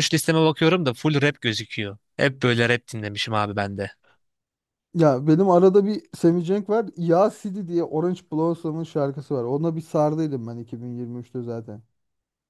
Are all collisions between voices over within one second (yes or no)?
yes